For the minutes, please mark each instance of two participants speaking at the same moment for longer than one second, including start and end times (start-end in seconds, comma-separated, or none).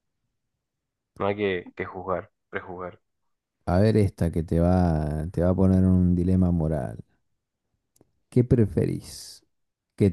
none